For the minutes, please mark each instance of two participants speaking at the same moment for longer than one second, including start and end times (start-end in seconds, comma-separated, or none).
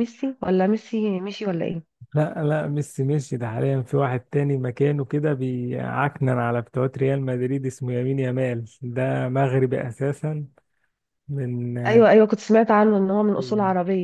none